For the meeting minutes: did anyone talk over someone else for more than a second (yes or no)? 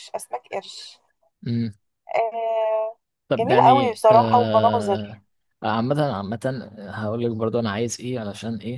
yes